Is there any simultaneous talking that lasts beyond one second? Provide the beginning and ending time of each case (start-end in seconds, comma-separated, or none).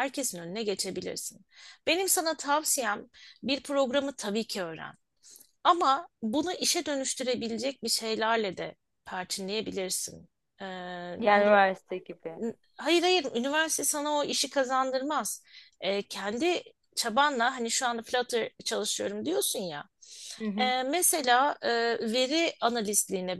none